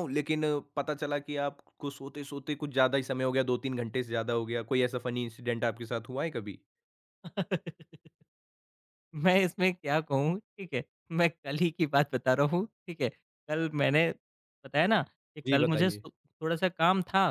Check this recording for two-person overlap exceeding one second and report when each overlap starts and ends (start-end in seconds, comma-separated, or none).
none